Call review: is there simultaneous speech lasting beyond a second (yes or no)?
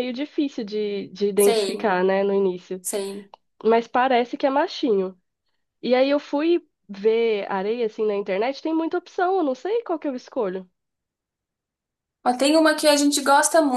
no